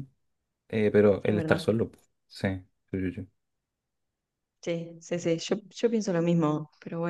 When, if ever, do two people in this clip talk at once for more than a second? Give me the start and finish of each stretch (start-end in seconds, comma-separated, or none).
none